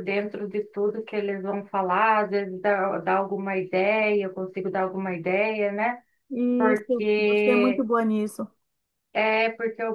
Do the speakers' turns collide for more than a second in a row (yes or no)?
yes